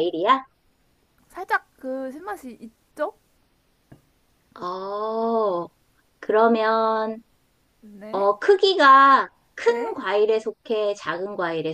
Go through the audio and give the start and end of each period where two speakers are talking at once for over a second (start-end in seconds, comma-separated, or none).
none